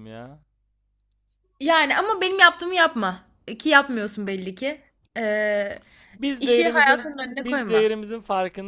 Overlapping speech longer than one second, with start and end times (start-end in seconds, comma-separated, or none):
6.4-7.9